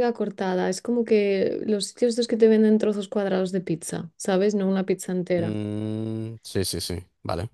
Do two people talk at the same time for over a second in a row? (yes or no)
no